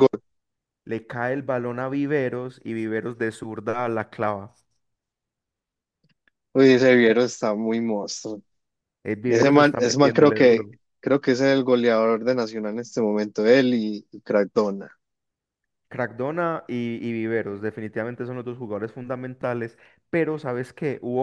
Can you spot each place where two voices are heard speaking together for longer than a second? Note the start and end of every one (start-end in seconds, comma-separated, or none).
9.3-10.7